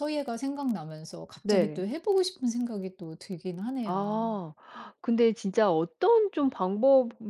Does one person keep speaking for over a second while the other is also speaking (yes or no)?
no